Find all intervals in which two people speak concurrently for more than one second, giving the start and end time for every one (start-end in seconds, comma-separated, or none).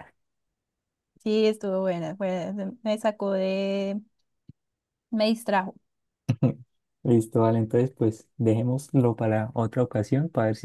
none